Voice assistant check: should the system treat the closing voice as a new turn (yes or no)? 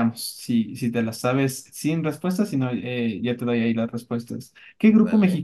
no